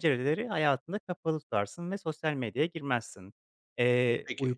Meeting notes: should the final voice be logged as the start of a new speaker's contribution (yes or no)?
no